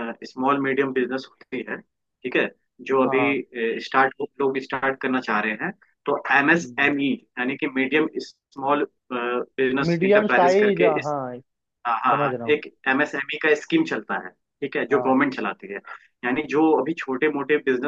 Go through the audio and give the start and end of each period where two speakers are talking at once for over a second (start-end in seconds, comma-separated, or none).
9.9-11.1